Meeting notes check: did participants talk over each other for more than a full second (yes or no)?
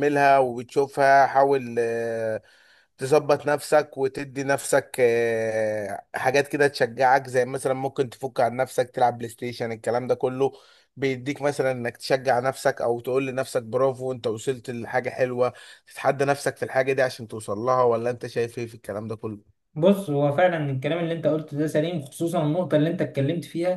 no